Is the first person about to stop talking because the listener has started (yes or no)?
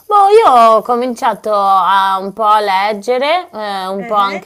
no